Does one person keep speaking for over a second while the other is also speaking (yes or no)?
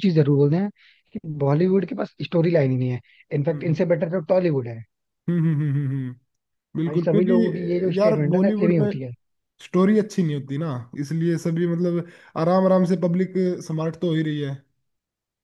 yes